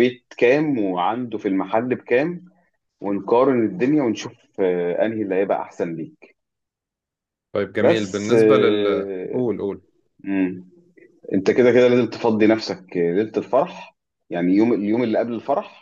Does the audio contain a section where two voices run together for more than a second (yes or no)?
yes